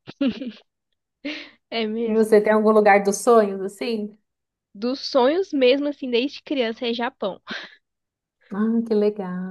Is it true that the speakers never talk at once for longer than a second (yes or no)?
yes